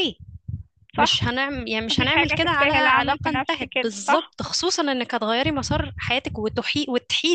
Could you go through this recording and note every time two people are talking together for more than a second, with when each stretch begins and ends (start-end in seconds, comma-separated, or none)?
1.9-4.3